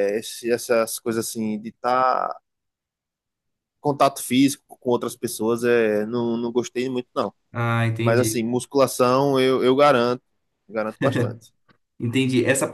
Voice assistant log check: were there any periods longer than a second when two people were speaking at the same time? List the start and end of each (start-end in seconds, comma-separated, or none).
none